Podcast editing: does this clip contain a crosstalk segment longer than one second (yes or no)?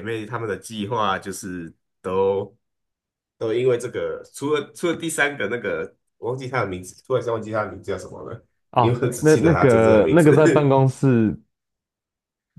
yes